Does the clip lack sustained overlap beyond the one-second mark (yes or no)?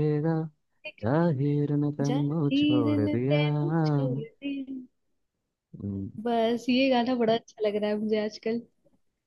no